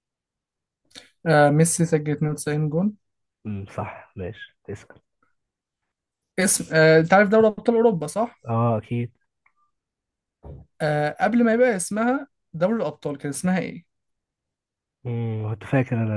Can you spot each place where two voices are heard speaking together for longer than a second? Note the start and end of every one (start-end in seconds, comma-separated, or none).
none